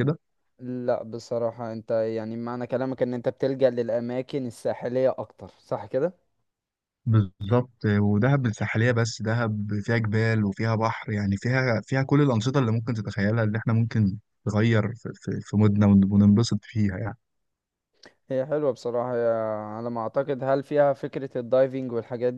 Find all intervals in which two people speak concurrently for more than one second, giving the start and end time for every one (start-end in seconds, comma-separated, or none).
none